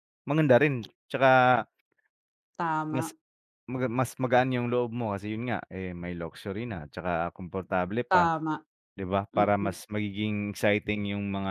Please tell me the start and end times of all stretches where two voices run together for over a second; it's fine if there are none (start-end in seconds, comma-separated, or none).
none